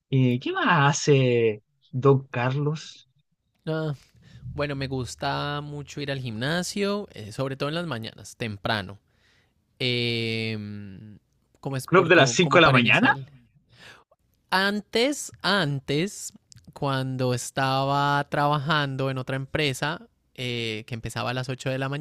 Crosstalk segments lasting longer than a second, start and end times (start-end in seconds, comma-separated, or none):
11.8-13.1